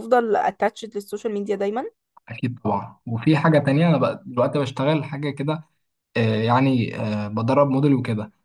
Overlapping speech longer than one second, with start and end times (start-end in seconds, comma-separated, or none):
none